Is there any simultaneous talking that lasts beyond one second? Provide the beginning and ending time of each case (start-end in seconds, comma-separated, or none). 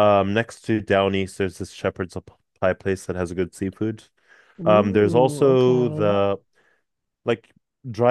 4.6-6.2